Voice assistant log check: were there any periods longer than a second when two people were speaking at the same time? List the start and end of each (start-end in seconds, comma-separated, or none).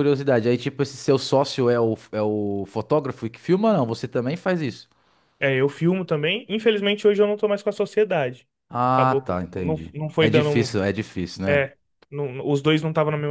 8.9-10.7